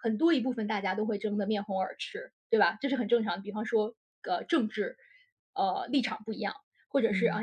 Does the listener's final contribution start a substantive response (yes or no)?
no